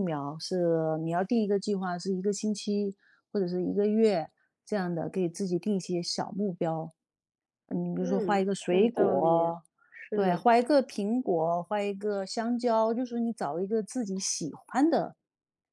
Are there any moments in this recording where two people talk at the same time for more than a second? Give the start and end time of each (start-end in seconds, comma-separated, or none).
8.0-9.3